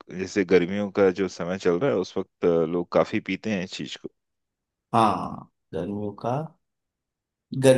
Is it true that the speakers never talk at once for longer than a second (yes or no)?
yes